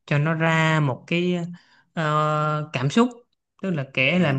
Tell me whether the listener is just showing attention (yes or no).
yes